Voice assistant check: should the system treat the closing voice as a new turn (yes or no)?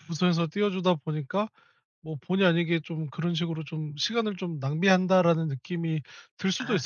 yes